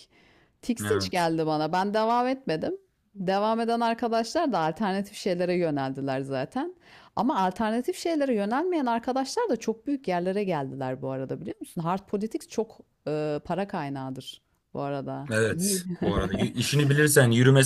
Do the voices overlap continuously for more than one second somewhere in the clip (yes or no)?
no